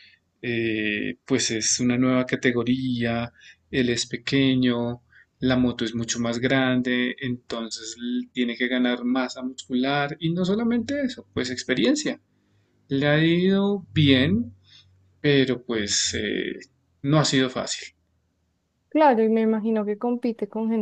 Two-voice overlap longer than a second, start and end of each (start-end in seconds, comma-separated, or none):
none